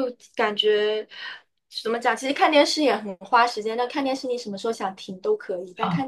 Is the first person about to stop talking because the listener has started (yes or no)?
no